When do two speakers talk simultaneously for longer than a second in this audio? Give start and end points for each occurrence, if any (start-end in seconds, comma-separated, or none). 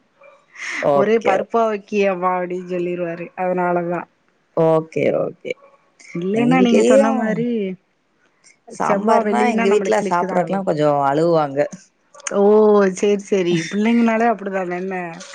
8.9-10.6